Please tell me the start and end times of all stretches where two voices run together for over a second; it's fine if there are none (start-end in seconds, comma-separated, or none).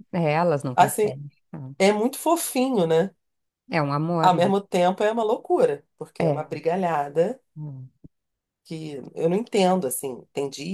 none